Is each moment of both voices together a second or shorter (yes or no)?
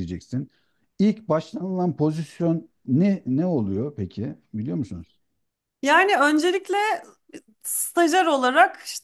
yes